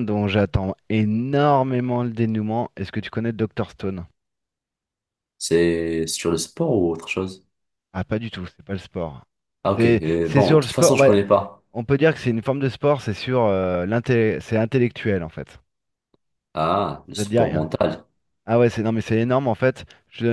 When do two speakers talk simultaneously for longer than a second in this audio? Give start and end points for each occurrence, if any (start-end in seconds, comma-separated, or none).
9.8-11.1